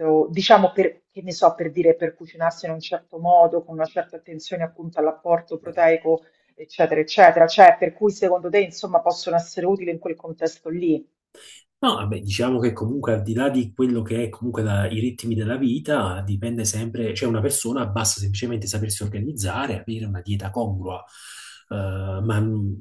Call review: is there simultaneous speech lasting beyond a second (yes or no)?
no